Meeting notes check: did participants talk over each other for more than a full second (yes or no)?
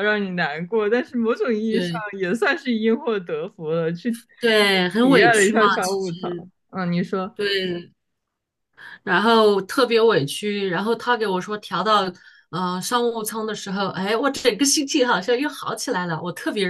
yes